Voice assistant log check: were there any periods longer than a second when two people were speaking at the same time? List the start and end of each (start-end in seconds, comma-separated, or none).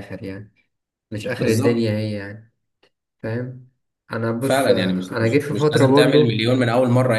4.4-6.5